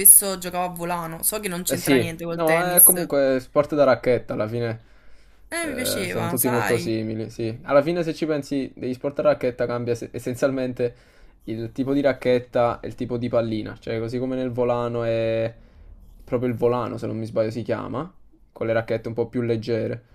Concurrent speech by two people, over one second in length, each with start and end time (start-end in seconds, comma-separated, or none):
1.7-3.1, 5.7-6.9